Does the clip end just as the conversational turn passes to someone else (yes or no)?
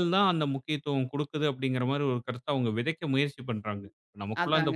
no